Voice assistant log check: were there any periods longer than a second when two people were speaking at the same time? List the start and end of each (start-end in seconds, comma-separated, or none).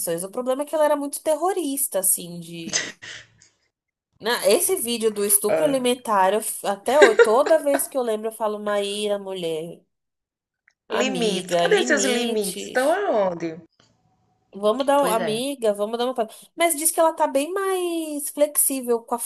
11.0-13.0